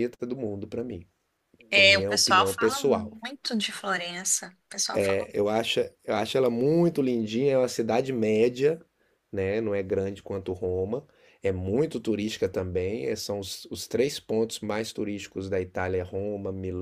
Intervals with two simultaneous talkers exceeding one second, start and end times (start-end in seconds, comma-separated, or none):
1.7-3.2